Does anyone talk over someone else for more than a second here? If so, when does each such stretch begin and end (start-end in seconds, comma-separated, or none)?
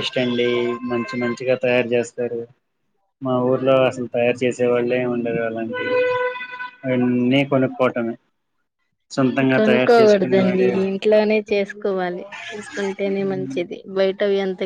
none